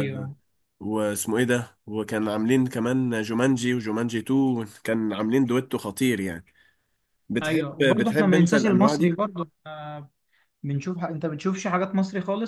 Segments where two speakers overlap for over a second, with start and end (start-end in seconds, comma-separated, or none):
7.4-9.2